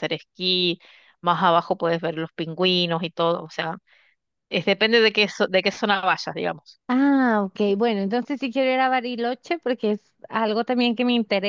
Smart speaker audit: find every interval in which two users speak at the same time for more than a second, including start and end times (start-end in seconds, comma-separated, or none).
none